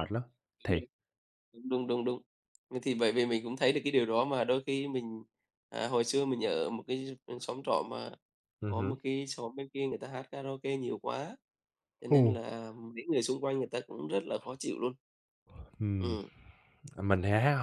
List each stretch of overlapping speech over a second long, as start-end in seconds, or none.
none